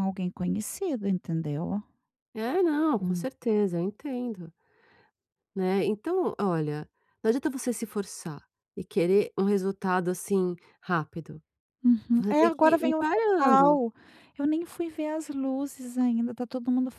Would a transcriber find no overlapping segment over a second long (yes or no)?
no